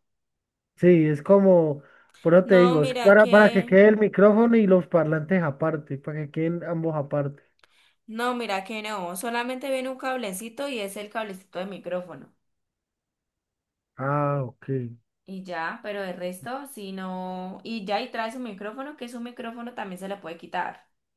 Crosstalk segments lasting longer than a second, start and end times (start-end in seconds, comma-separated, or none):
2.4-3.8